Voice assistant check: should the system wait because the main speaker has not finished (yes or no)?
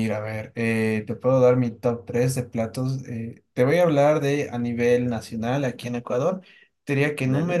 yes